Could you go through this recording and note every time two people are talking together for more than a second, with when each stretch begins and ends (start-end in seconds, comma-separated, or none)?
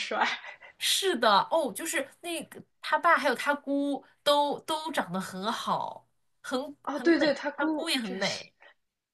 6.8-8.4